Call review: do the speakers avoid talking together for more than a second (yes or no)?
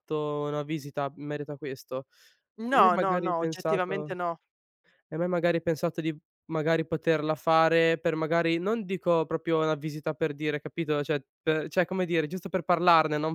no